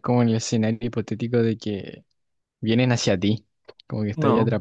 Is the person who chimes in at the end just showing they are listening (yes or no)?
no